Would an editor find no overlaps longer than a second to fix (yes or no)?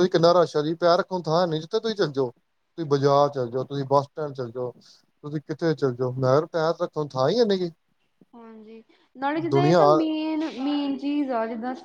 yes